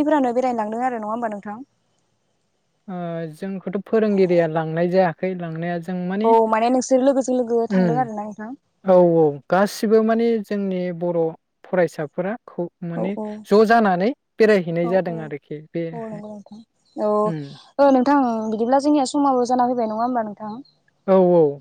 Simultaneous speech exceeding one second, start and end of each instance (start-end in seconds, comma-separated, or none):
none